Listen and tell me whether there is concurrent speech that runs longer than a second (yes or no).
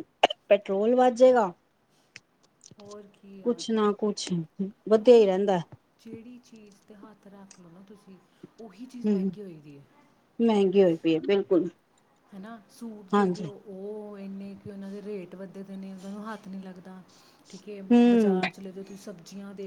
no